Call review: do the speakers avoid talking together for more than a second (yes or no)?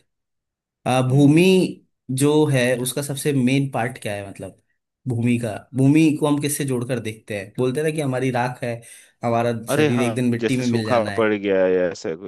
no